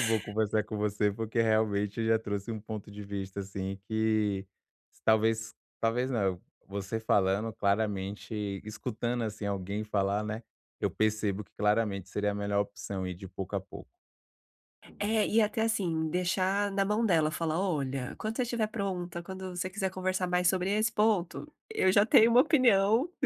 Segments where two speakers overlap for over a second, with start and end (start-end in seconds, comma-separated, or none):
none